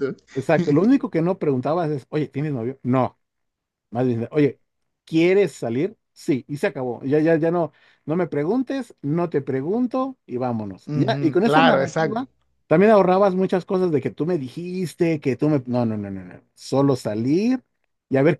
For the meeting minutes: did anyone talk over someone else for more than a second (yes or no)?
yes